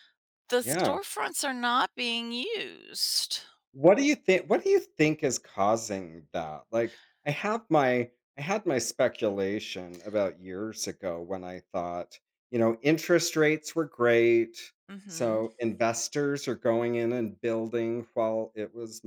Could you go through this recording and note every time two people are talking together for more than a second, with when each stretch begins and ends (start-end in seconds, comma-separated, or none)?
none